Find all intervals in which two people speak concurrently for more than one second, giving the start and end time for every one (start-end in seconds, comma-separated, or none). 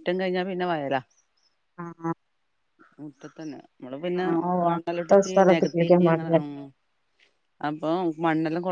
4.8-6.3